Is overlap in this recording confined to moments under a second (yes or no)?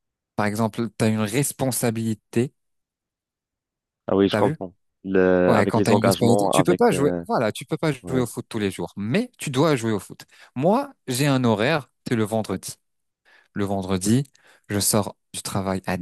no